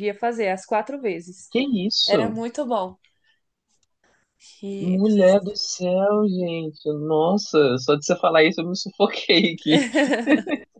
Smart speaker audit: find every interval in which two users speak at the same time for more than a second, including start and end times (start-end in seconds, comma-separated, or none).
none